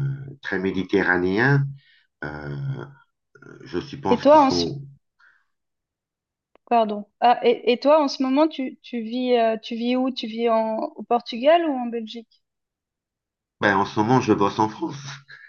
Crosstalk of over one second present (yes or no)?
no